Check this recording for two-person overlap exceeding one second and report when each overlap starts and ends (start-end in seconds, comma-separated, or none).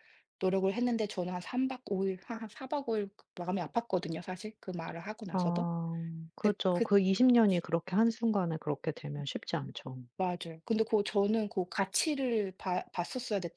none